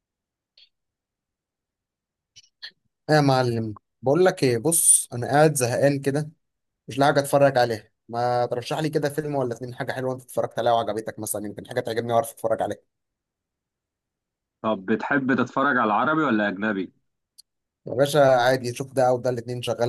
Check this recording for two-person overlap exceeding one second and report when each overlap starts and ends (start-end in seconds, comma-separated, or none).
none